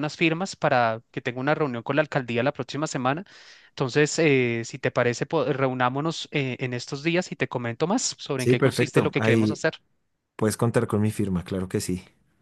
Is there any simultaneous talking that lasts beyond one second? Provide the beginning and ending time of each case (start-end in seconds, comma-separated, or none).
8.4-9.6